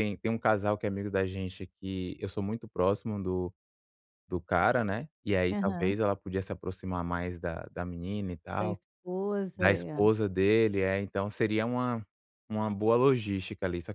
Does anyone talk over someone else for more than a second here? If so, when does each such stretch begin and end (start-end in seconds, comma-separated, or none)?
none